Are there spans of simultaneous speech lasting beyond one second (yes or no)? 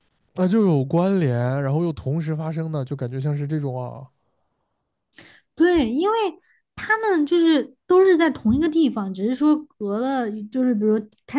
no